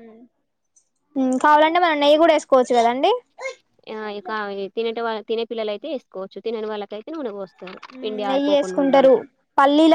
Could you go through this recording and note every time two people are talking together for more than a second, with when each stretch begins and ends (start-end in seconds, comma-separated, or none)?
none